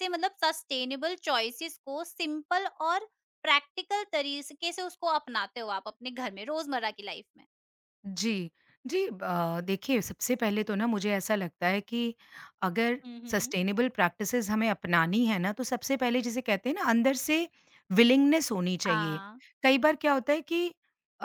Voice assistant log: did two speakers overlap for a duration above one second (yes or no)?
no